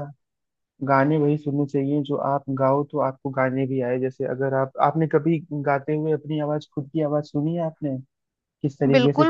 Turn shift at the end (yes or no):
yes